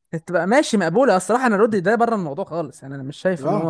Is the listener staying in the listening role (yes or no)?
no